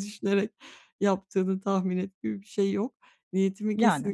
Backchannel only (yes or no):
yes